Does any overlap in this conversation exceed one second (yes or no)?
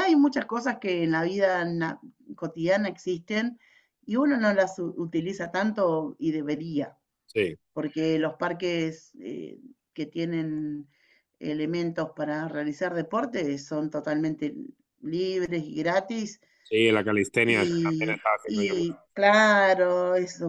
yes